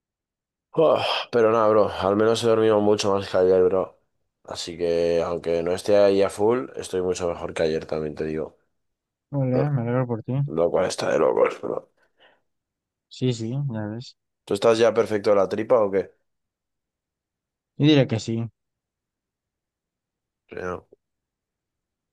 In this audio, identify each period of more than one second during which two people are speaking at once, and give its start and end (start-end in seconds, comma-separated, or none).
none